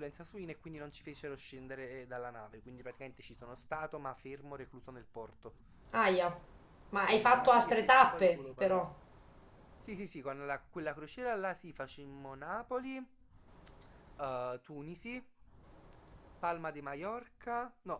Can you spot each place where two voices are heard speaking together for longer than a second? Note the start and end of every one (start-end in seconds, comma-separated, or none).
7.1-8.8